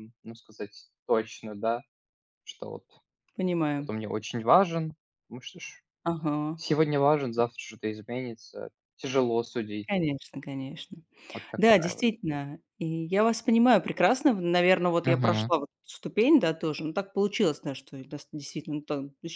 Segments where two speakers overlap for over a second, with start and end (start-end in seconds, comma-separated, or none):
none